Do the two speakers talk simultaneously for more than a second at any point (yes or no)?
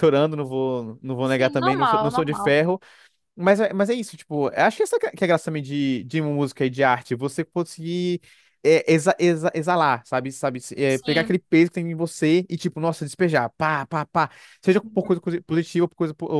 yes